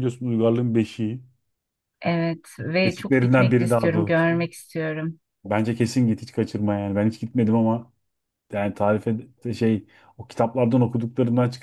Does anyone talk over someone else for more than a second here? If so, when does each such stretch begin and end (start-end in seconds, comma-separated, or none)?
2.8-4.4